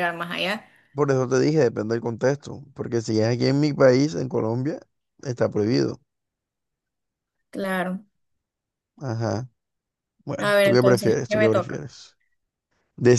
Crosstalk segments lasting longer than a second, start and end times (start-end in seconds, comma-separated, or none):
10.4-11.8